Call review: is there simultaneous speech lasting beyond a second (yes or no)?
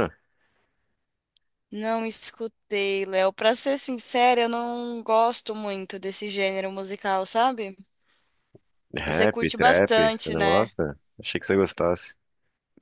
yes